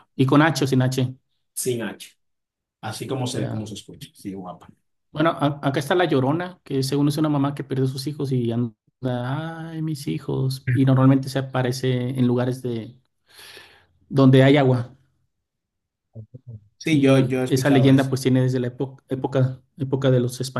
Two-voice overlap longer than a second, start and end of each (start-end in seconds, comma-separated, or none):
16.9-18.1